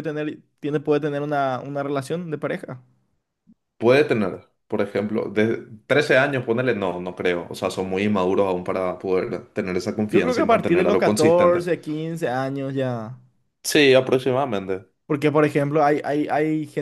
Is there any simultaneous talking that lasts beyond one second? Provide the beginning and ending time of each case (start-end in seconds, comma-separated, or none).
10.1-11.6